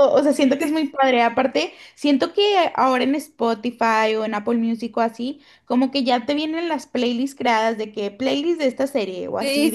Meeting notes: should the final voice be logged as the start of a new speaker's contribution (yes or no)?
yes